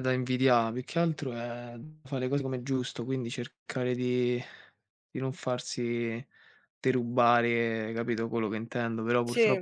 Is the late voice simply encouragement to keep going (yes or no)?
yes